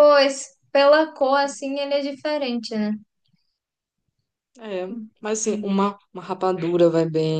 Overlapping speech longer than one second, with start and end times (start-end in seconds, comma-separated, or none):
none